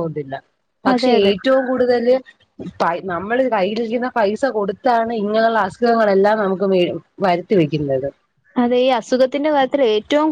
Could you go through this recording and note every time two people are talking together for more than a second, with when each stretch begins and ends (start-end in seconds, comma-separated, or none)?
none